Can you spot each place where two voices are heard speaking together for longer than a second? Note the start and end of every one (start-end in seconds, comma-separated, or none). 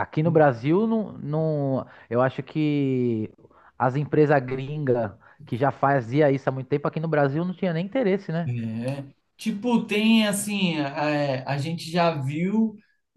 none